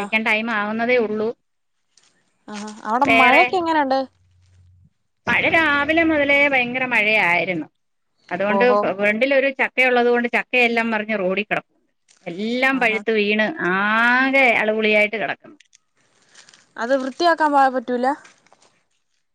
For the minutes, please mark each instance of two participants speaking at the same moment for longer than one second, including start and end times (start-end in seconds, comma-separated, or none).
none